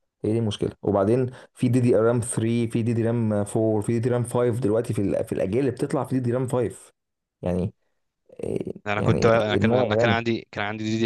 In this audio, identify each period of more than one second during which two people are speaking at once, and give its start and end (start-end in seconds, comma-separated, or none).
8.9-10.2